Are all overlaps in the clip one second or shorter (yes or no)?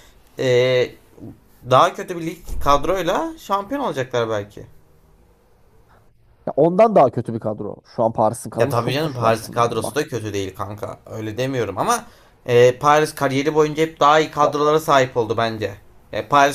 no